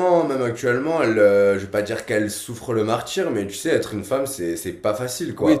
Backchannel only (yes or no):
no